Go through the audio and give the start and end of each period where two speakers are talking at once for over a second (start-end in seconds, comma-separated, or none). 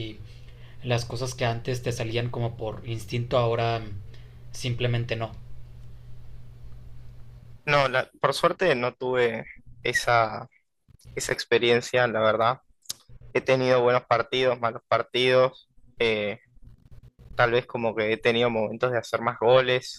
none